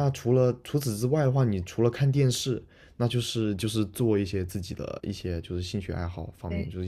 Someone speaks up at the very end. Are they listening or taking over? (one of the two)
listening